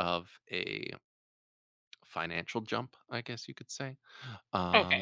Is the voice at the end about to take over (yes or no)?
yes